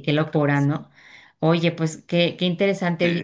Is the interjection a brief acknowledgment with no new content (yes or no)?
yes